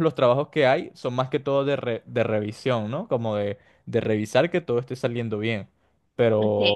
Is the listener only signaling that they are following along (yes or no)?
yes